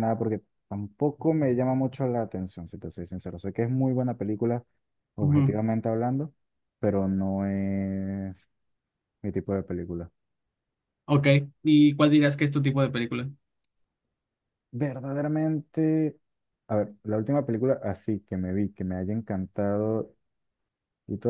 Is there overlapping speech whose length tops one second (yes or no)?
no